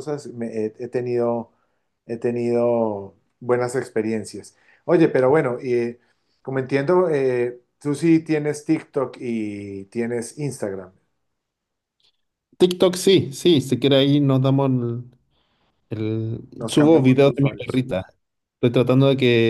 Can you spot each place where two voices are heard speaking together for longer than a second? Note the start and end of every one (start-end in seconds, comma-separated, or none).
16.6-17.9